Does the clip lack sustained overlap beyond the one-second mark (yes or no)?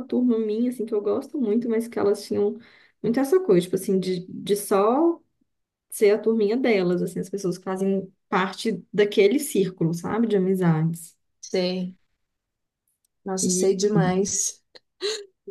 yes